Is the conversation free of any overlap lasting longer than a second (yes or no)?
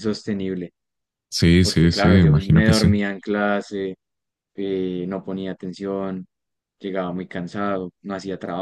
no